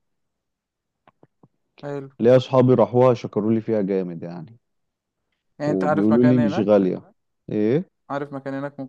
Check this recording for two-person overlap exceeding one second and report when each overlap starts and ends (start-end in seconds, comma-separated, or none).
5.7-6.9